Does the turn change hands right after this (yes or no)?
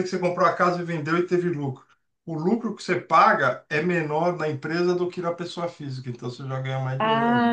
yes